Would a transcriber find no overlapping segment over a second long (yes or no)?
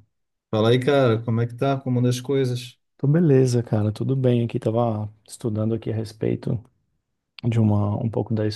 yes